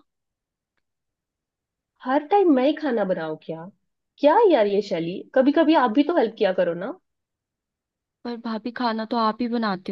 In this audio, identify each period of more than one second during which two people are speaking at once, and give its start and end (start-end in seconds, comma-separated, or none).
none